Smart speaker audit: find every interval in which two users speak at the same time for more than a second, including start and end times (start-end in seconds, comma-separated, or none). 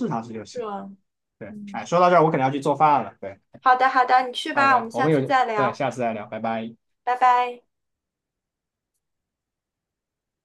4.5-5.8